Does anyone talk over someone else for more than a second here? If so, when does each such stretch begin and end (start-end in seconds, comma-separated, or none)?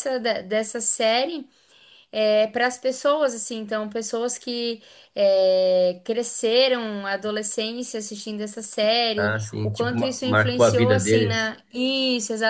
9.2-11.5